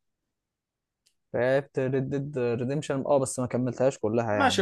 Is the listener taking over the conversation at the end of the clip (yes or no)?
yes